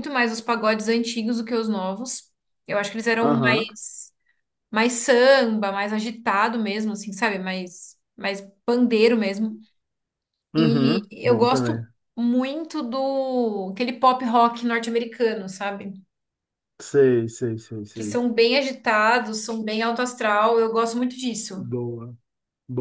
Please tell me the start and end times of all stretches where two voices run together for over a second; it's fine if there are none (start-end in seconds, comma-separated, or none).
10.6-11.8